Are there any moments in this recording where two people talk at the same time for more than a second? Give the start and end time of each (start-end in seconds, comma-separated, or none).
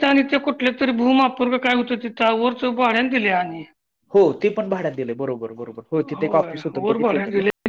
none